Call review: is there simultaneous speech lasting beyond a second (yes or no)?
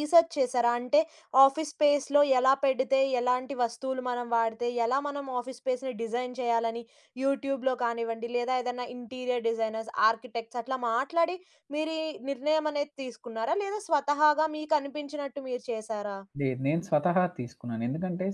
no